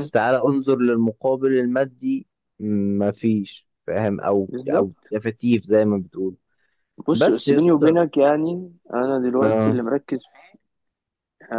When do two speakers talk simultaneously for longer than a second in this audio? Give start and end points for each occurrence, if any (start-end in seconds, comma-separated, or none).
none